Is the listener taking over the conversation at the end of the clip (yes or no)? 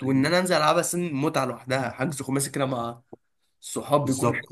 yes